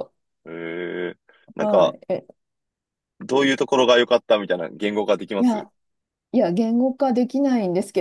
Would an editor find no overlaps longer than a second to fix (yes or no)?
yes